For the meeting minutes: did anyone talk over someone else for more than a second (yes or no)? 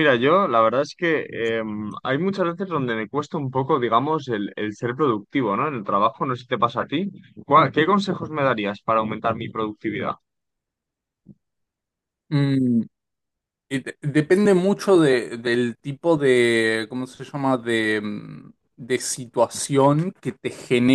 no